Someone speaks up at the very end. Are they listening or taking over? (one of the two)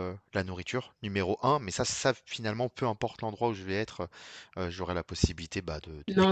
taking over